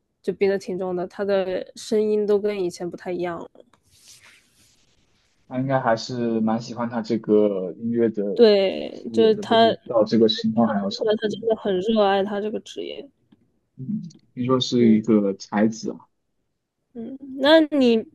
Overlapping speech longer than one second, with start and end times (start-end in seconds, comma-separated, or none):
8.9-11.3